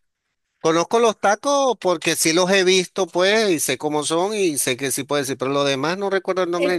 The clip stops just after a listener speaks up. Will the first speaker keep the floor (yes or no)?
no